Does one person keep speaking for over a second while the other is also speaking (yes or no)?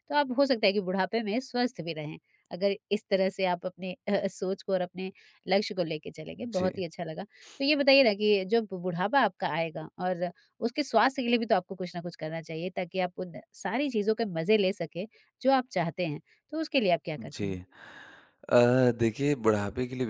no